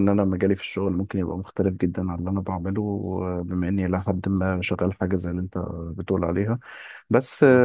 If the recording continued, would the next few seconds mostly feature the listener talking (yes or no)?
no